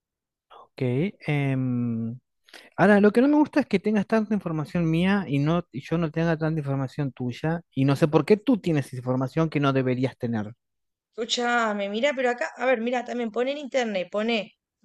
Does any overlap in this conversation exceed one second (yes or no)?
no